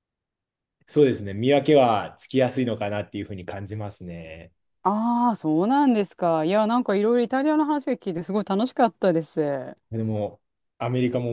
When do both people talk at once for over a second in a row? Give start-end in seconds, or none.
none